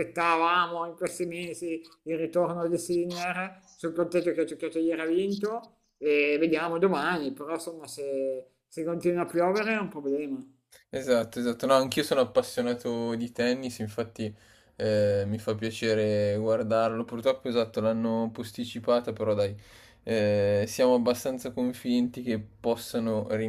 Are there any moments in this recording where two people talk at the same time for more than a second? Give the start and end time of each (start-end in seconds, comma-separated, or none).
none